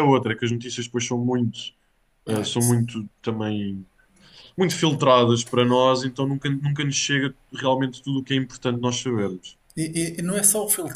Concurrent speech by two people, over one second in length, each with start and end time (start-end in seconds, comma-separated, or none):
none